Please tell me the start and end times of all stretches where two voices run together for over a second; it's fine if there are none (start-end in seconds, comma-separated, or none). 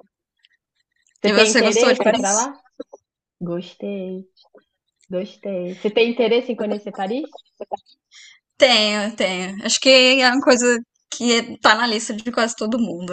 1.2-2.5